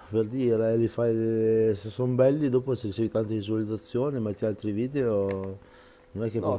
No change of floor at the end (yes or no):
no